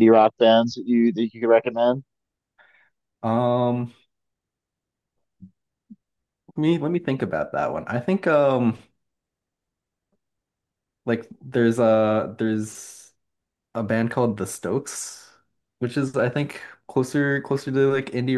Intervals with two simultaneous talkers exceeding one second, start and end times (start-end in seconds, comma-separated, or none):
none